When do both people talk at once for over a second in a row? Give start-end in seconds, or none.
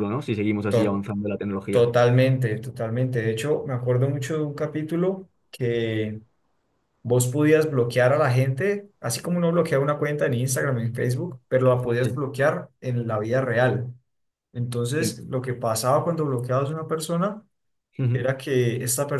none